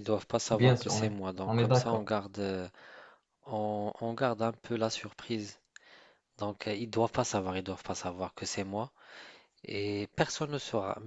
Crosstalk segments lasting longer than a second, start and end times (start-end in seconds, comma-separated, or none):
0.5-2.1